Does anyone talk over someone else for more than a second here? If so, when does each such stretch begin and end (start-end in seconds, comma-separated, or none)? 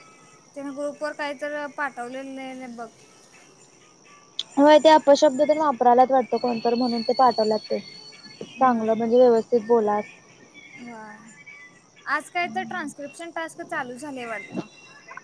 none